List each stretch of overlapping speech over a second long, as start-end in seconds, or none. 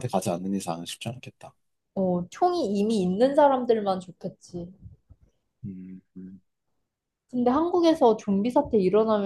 none